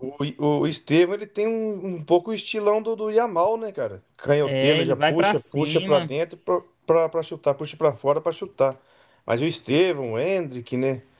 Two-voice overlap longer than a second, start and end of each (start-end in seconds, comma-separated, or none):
4.4-6.1